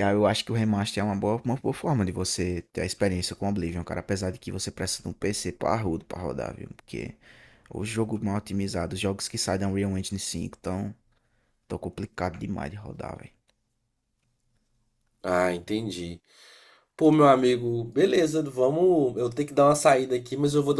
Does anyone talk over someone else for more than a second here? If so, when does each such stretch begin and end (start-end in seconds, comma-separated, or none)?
none